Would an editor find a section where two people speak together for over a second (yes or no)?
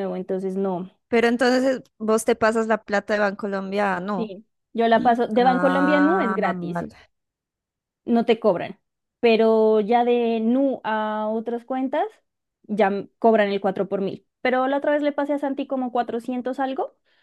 yes